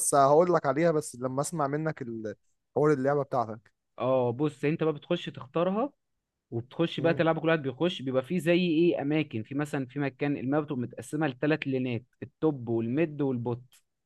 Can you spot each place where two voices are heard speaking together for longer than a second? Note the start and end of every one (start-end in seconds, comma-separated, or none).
none